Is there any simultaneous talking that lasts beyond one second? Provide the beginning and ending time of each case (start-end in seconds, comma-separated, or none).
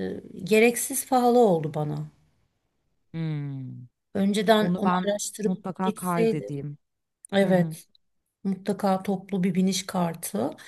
4.6-6.5